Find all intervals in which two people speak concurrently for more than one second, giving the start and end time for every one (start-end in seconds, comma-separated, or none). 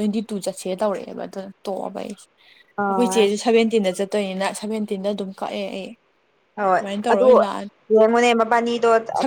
none